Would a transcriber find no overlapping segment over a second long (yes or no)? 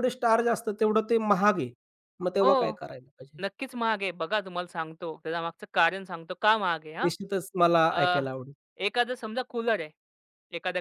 yes